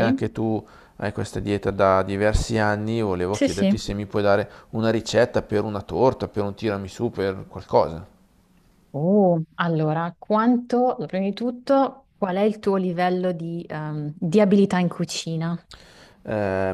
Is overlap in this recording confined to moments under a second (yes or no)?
yes